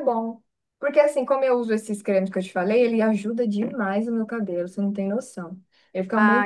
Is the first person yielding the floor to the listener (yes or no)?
no